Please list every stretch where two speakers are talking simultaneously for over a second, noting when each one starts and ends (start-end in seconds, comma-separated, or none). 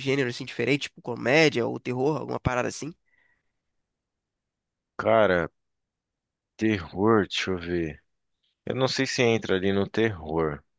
none